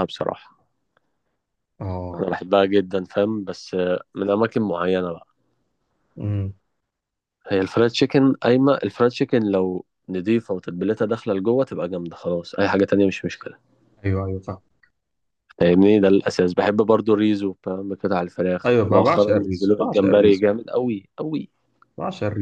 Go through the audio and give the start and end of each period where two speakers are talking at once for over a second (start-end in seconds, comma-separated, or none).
18.6-20.4